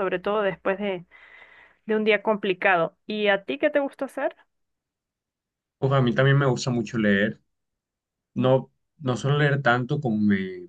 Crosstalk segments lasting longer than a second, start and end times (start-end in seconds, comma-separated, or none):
none